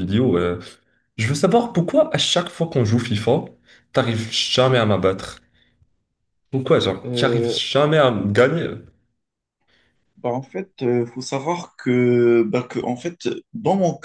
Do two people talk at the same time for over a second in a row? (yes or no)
no